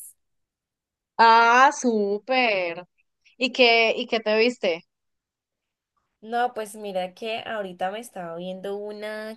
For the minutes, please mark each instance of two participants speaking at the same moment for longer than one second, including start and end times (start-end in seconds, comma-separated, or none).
none